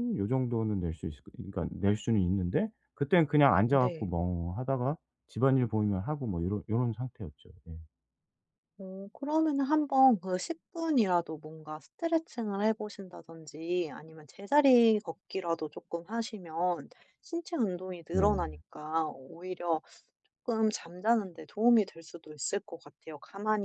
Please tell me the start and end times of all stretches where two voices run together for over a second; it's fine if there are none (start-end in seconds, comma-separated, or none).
none